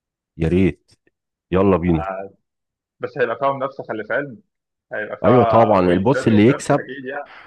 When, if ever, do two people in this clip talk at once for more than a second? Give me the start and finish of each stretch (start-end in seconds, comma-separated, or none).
5.2-6.9